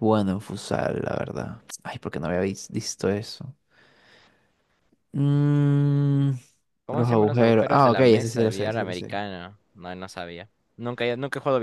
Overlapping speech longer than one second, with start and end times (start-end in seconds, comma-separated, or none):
6.9-9.2